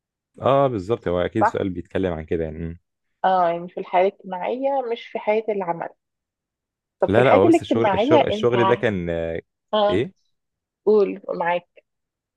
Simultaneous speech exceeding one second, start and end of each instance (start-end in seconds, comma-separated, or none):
7.1-8.5